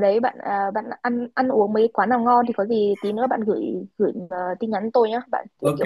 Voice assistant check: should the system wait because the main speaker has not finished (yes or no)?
yes